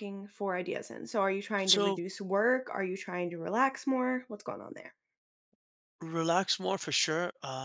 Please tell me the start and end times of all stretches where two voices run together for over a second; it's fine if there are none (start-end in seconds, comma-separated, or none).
none